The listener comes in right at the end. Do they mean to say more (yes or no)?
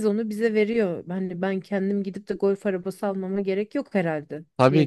yes